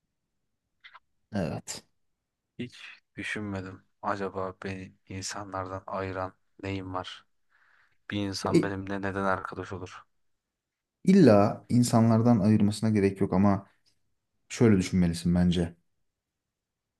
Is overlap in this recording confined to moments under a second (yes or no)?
yes